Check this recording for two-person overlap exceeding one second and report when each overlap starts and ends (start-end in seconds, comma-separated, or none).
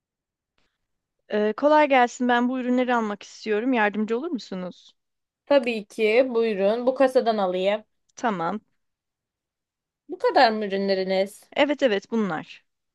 none